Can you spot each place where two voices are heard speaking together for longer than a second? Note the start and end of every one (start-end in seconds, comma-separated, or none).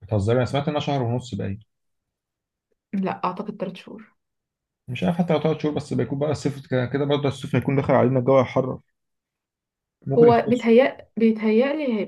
none